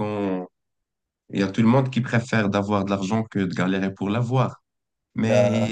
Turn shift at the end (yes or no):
no